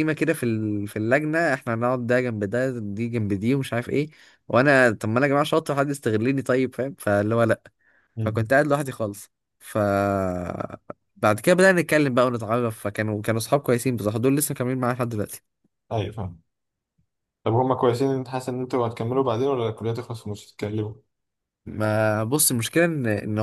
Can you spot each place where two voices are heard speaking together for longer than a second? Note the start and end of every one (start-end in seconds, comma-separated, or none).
none